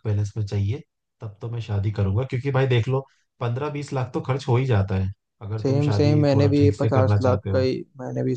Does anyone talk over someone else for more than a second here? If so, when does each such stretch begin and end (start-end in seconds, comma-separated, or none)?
5.6-7.7